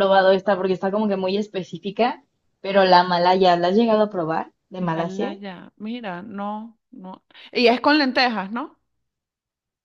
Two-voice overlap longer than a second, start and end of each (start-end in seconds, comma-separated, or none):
none